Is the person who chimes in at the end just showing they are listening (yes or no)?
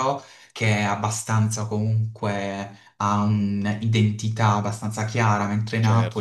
no